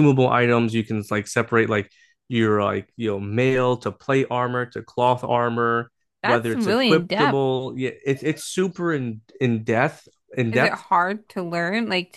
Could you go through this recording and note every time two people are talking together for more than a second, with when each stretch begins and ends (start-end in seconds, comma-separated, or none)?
6.2-7.5